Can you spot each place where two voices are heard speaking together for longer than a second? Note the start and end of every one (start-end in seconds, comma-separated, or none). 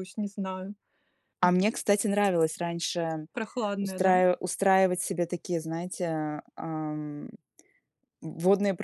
none